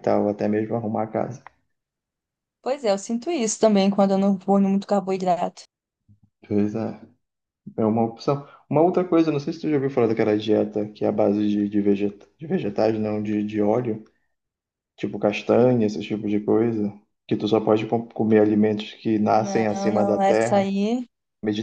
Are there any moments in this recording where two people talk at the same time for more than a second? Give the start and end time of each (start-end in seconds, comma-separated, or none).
19.3-20.7